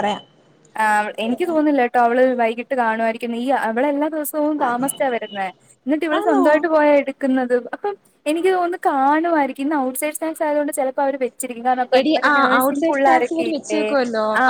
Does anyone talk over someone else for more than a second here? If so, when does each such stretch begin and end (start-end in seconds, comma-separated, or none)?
12.0-13.8